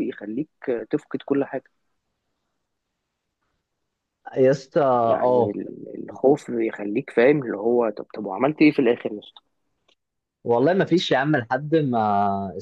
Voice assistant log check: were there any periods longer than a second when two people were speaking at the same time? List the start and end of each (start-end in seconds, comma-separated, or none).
none